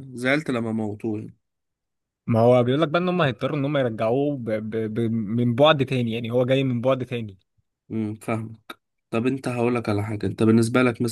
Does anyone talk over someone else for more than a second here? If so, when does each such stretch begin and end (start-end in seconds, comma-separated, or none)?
none